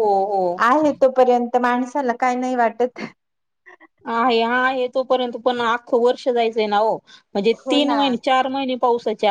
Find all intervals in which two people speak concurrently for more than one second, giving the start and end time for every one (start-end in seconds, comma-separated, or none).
none